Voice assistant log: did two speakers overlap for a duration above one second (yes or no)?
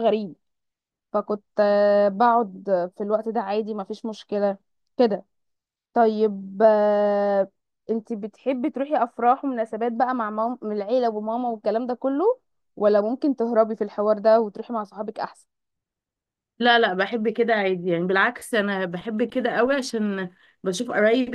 no